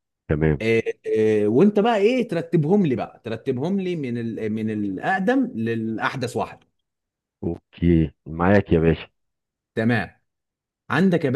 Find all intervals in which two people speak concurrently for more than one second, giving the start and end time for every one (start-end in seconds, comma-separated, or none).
none